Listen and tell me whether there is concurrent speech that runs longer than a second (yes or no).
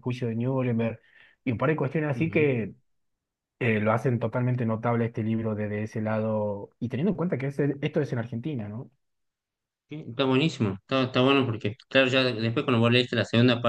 no